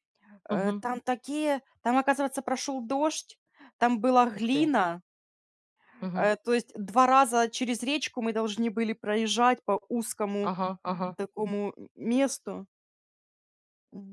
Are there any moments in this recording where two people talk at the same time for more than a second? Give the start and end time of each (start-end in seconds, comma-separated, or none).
none